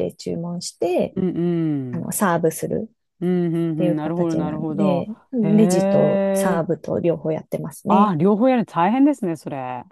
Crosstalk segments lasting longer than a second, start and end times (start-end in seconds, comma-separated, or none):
3.8-6.6